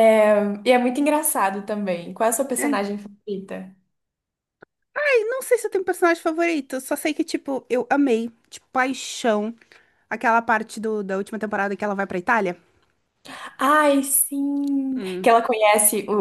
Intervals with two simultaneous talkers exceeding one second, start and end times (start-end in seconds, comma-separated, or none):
none